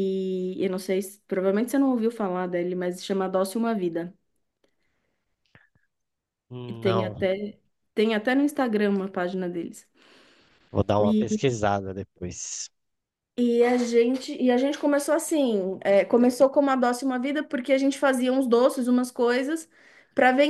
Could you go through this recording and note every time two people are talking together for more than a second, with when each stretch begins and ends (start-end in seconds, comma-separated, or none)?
none